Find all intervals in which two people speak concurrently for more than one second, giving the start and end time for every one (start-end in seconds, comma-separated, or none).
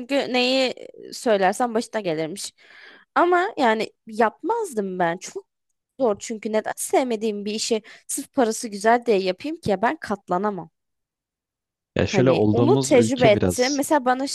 12.1-13.8